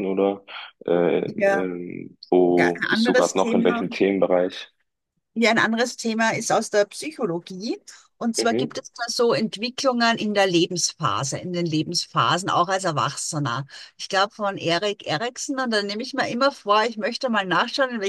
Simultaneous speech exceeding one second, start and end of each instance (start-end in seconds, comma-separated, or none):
2.6-3.9